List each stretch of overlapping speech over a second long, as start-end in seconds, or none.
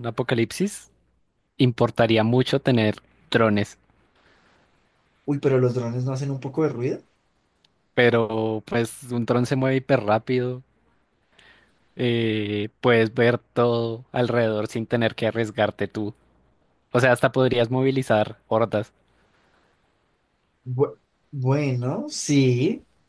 none